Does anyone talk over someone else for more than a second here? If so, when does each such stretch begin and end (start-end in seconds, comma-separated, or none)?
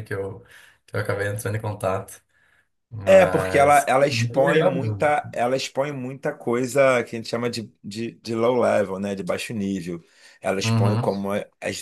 3.1-5.1